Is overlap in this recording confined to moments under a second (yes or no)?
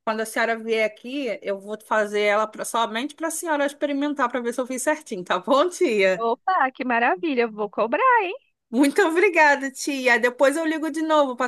yes